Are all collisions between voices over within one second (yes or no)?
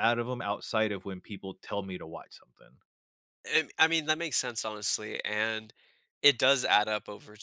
yes